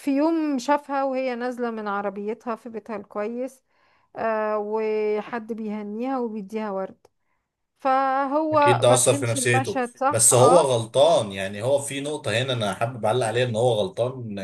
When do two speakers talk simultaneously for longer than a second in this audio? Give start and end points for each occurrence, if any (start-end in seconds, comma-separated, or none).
8.5-10.7